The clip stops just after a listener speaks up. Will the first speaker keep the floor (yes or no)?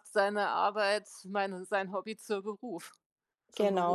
no